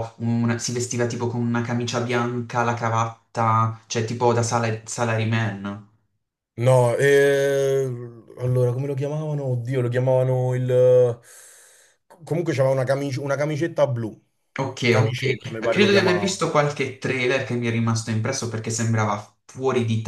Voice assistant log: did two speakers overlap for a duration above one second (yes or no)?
yes